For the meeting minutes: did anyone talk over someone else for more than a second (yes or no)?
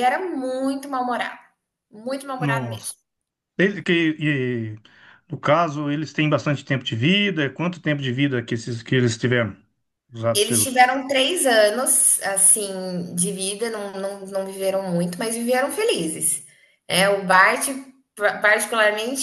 no